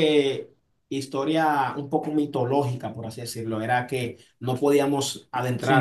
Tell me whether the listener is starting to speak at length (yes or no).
no